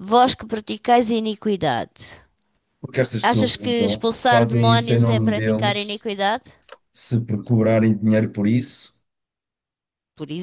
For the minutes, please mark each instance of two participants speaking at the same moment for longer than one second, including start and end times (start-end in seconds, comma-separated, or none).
3.2-6.1